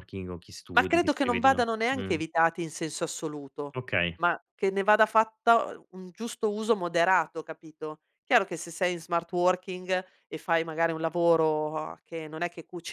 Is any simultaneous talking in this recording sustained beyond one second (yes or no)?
yes